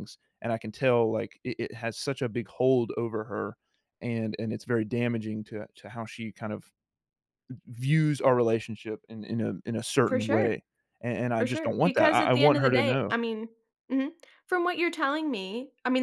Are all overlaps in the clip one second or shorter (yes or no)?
no